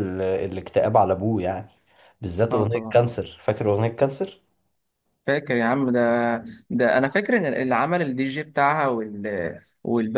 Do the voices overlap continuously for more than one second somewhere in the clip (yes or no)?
no